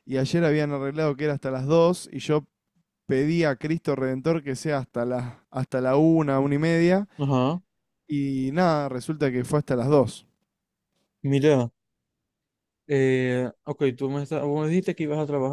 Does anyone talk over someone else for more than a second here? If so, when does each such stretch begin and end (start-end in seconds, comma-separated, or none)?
none